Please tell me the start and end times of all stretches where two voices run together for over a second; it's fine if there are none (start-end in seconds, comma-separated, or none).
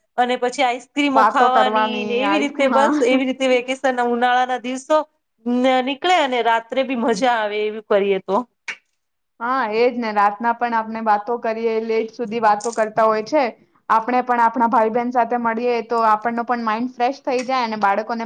1.2-2.9